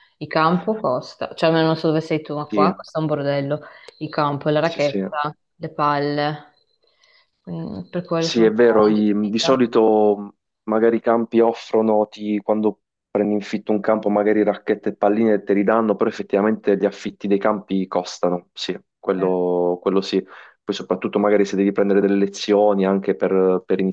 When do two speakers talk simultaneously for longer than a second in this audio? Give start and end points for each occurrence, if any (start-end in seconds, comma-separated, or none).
8.2-9.7